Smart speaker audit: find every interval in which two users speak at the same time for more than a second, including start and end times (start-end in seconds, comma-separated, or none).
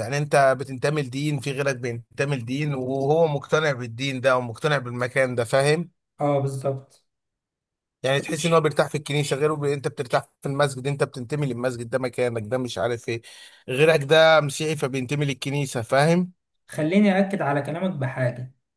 none